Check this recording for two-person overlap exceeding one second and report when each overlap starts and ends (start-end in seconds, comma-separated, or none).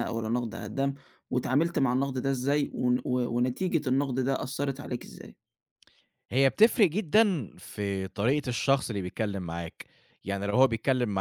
none